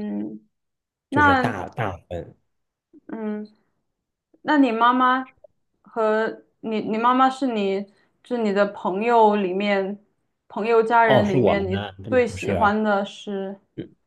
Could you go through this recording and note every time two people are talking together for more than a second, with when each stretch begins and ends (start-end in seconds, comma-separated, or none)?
11.0-12.7